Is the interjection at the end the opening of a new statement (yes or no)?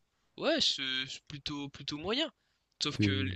no